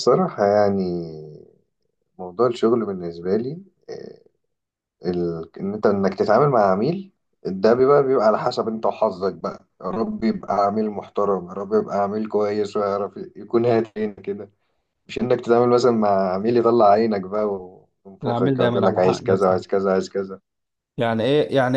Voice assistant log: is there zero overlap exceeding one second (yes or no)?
no